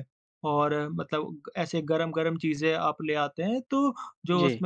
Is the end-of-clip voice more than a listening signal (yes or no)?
no